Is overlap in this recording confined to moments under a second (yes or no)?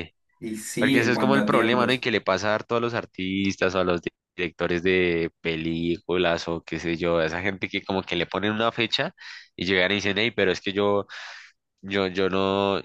no